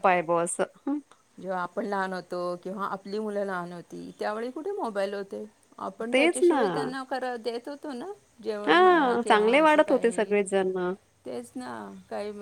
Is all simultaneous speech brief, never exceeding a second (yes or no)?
no